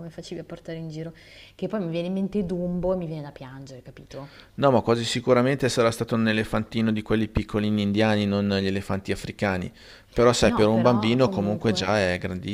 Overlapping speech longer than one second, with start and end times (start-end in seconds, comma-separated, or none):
10.4-11.9